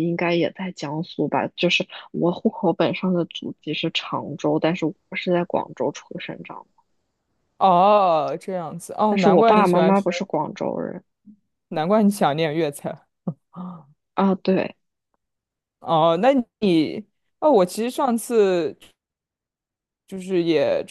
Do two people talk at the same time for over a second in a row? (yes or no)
yes